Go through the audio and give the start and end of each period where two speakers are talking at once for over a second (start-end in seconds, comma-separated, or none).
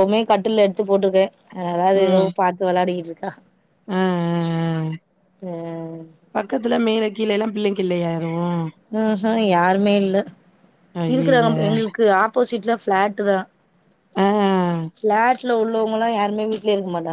none